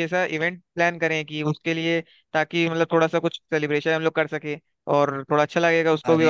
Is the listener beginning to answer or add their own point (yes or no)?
no